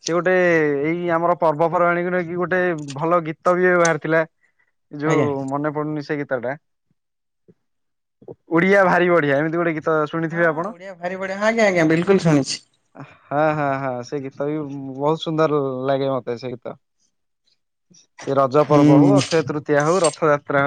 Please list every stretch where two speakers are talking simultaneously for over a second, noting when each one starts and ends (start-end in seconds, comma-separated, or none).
none